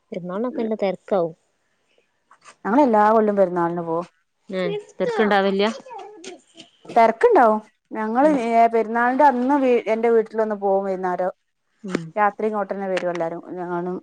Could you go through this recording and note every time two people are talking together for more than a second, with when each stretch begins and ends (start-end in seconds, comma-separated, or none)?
none